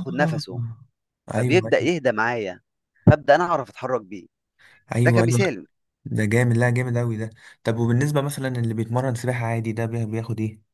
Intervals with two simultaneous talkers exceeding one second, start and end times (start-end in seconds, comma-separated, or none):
none